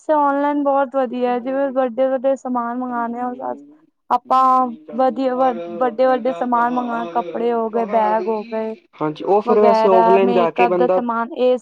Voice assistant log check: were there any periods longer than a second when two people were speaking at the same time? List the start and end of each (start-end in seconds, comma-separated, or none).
9.5-11.0